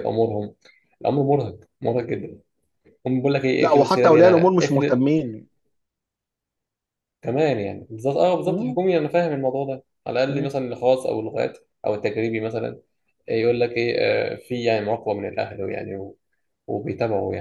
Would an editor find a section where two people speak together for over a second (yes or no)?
yes